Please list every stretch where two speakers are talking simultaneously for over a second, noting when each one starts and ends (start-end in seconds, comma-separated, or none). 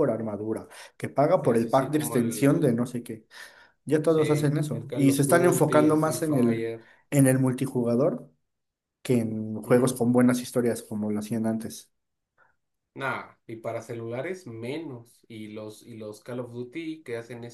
1.4-2.8, 4.0-6.7